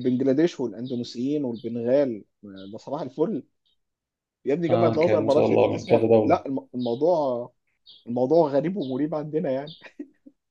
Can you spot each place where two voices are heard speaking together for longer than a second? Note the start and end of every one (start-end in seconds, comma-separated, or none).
4.7-6.4